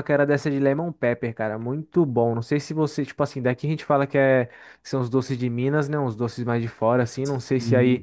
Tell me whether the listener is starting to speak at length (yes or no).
no